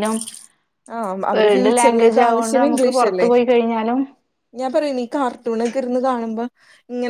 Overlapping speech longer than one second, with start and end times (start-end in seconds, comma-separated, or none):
1.4-3.3